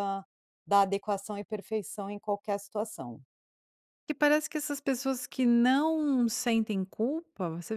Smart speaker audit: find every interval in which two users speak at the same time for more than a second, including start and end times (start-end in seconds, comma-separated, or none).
none